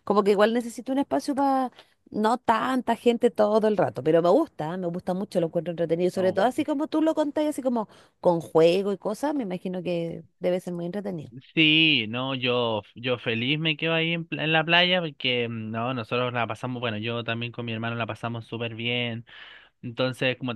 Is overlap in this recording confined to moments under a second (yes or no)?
yes